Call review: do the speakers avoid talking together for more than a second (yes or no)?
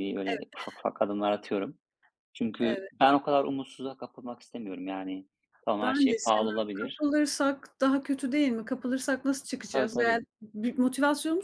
no